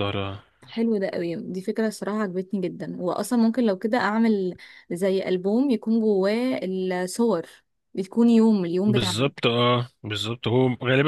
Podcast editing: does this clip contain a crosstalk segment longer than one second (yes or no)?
no